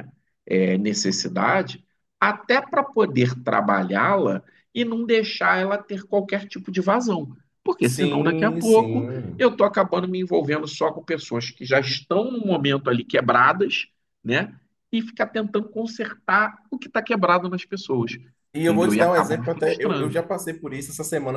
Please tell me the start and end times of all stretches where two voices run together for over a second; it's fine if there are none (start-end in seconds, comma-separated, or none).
7.8-9.5, 18.6-20.2